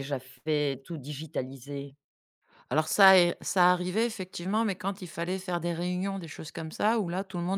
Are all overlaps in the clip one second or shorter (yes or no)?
yes